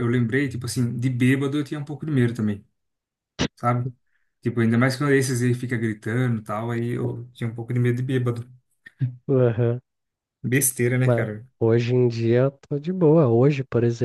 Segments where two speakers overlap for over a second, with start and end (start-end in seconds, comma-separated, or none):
none